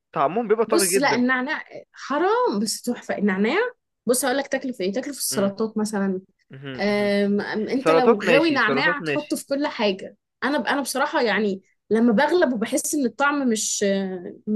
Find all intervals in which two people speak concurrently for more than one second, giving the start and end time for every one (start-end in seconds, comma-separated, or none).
7.8-9.4